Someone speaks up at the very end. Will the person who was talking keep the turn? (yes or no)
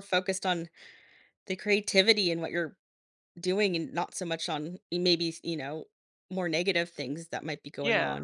no